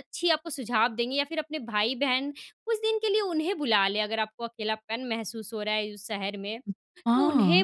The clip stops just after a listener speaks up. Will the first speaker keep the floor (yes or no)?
yes